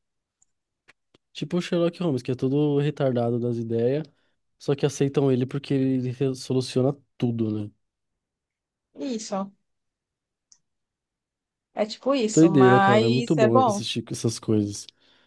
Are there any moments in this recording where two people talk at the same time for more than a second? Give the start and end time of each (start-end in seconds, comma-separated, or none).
12.3-13.8